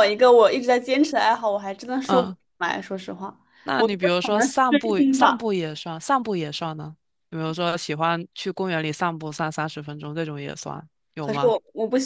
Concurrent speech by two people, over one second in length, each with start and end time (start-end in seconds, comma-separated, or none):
3.8-5.4